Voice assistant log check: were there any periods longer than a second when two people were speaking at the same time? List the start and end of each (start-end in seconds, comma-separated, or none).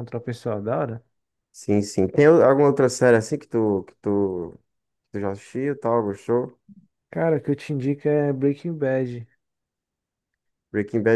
none